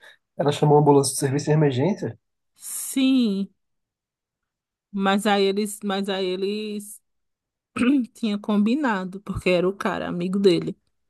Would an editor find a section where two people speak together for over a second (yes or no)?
no